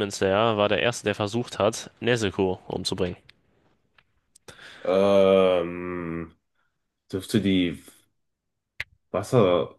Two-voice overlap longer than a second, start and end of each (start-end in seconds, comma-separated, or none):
none